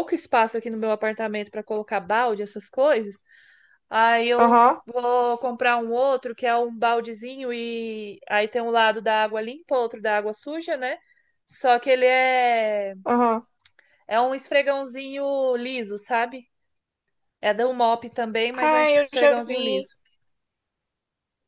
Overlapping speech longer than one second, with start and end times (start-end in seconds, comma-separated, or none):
18.5-19.9